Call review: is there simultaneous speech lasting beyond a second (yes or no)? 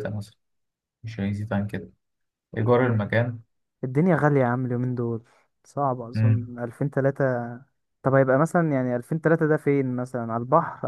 no